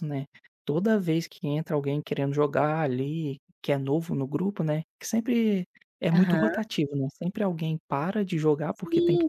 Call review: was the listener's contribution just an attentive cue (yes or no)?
no